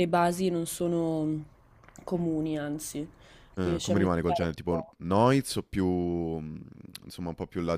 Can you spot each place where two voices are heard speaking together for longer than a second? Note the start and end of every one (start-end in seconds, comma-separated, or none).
3.6-4.9